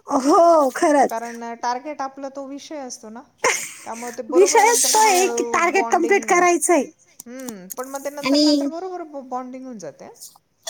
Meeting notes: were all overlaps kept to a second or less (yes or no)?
no